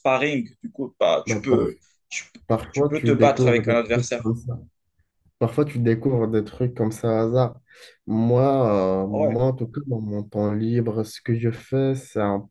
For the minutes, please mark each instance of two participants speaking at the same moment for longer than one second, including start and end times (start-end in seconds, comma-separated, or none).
2.7-4.2